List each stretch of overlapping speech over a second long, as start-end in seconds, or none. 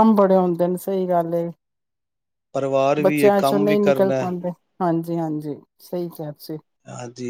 3.0-4.3